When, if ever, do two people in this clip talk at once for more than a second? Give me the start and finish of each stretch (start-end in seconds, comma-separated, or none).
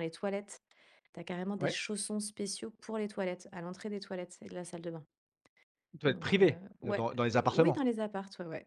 6.1-7.8